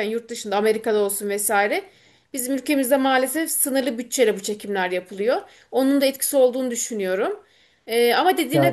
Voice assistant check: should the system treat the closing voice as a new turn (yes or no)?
no